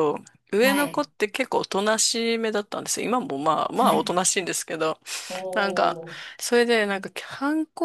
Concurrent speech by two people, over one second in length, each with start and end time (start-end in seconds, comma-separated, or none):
none